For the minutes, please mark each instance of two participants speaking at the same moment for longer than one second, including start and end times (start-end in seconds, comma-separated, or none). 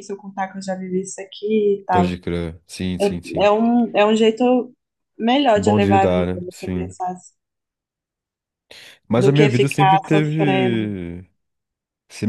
5.6-6.9, 9.2-10.9